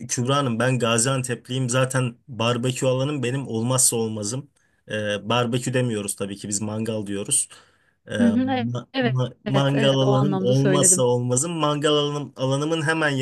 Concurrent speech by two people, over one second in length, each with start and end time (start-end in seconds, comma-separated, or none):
8.2-11.1